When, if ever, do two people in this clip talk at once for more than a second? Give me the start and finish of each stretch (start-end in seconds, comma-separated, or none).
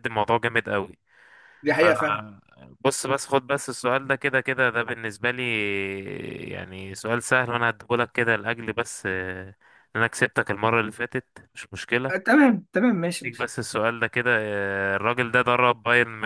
none